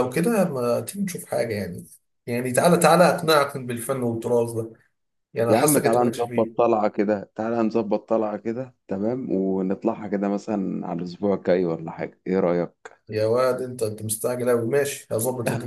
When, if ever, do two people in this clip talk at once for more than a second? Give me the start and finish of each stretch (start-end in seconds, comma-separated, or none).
5.5-6.7